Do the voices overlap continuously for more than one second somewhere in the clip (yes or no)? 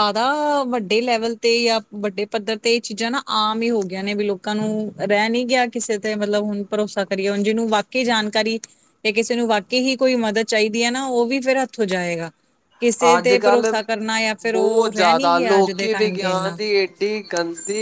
yes